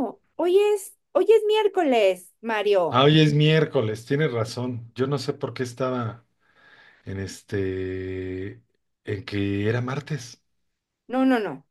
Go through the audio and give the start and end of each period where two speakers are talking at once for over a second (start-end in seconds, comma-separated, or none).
none